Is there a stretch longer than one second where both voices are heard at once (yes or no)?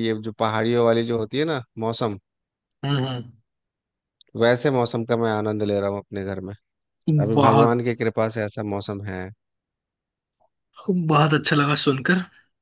no